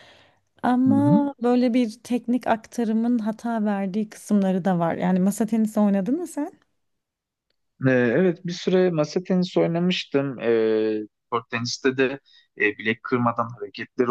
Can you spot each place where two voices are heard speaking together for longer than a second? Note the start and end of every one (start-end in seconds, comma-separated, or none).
none